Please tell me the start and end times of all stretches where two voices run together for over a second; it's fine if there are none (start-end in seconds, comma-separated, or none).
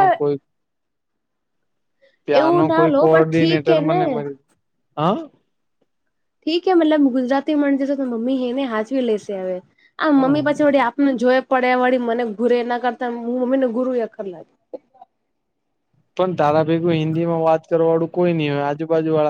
2.4-4.0